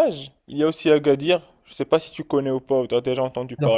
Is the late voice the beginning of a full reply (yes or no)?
yes